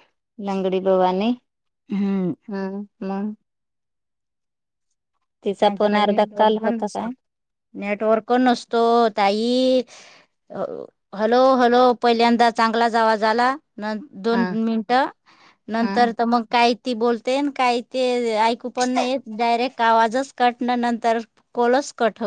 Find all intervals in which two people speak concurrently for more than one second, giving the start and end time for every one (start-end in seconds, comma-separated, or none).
5.8-7.1